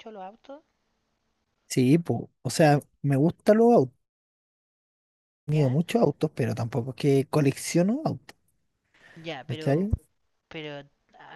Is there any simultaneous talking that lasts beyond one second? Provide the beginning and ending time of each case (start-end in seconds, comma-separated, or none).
none